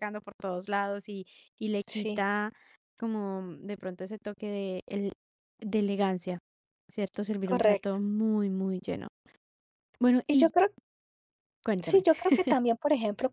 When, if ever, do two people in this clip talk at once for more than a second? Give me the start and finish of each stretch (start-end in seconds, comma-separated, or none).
none